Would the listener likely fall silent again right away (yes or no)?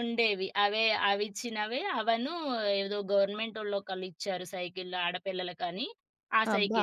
no